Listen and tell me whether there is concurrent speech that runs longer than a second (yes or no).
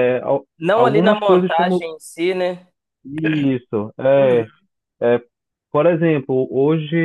yes